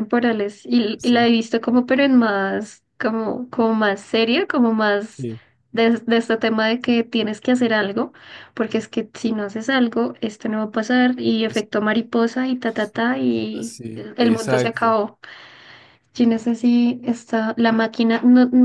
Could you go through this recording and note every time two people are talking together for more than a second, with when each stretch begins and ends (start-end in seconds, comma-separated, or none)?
13.6-15.0